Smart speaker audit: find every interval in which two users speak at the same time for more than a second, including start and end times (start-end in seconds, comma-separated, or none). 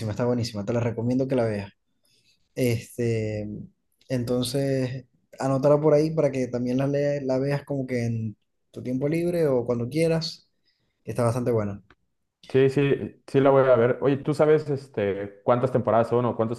none